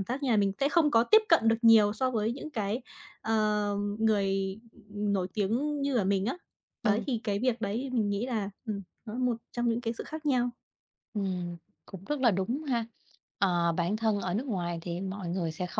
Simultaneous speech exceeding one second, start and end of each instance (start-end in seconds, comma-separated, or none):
none